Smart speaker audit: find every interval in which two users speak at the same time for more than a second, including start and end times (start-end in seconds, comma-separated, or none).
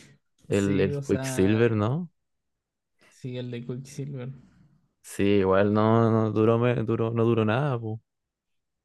0.5-1.7